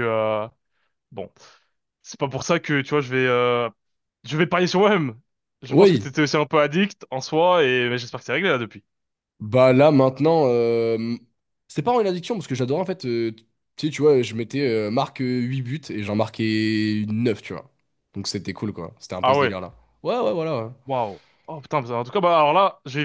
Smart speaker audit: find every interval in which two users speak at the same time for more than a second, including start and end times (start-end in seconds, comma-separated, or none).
none